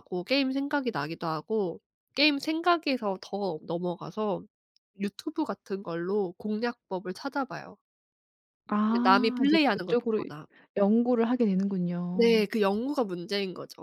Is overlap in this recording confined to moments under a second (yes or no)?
no